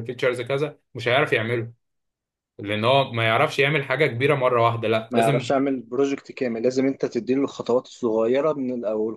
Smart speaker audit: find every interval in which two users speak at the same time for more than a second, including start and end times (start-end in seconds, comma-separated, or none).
none